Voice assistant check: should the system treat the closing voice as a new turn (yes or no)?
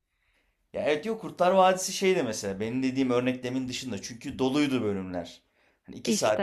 no